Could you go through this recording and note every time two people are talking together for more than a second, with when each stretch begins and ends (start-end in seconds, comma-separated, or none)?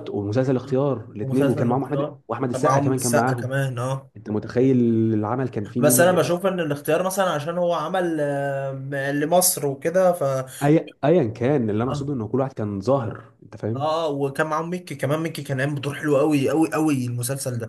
1.2-3.5